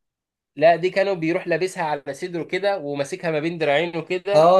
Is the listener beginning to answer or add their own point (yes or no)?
yes